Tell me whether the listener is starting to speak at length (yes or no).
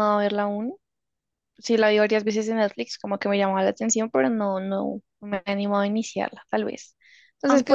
no